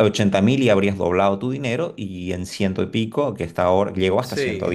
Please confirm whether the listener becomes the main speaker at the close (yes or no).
no